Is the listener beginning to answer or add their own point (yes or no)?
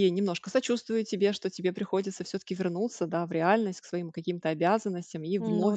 no